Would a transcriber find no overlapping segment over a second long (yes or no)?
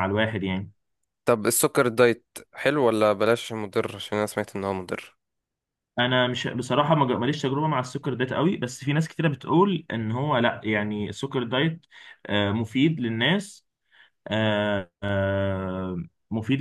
yes